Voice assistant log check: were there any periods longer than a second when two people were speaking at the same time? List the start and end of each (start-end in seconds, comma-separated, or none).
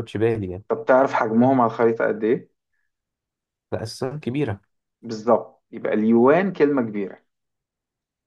none